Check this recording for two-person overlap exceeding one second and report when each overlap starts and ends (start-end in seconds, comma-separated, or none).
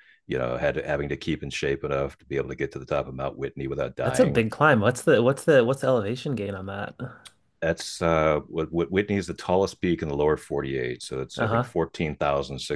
none